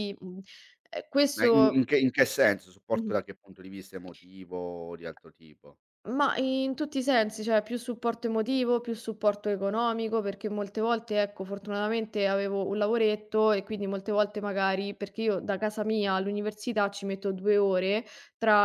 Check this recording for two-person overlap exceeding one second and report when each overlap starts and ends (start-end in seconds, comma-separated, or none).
none